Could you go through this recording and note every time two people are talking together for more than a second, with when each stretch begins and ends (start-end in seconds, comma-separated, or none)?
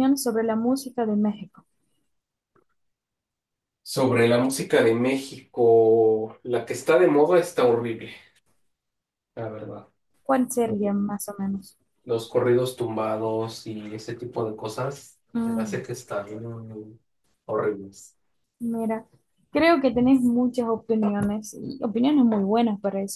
none